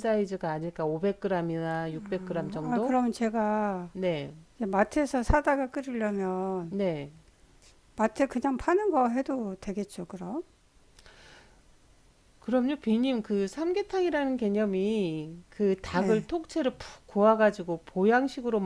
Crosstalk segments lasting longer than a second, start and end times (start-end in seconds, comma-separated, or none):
none